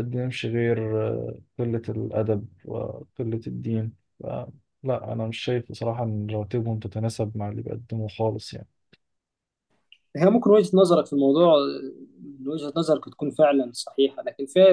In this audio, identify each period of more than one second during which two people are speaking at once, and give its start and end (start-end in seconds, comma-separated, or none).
none